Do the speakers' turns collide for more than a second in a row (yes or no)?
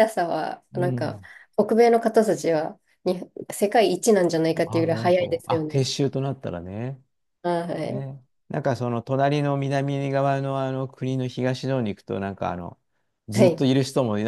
yes